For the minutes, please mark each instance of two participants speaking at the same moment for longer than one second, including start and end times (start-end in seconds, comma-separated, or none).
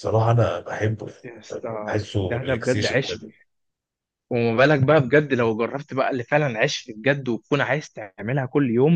1.5-3.2